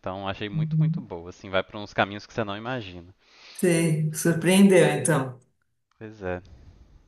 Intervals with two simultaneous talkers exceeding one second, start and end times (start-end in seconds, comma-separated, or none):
none